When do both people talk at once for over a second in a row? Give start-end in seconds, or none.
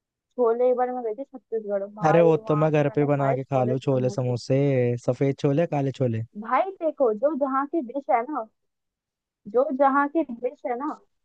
2.1-4.4